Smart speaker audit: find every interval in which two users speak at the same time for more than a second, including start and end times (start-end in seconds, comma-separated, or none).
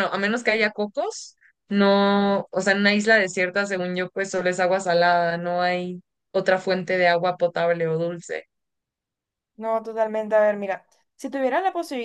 none